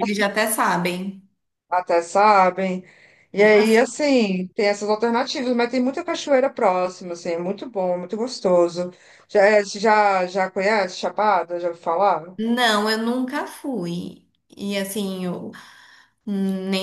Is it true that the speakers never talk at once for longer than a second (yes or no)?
yes